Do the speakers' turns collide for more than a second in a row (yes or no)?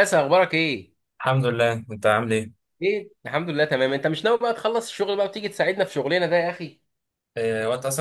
no